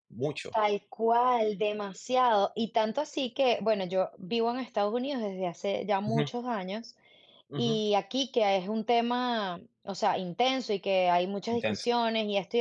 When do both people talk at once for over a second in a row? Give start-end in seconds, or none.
none